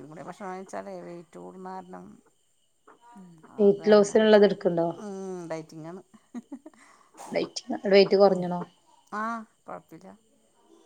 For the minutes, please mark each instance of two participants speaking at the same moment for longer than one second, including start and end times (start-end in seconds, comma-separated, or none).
none